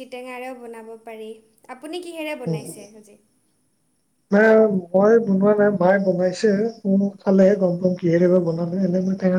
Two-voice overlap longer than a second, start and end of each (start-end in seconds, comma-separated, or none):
none